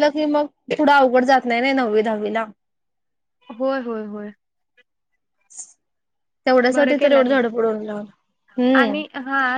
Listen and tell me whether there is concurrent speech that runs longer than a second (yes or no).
no